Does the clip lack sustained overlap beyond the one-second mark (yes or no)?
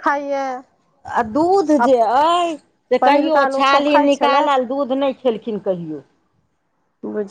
no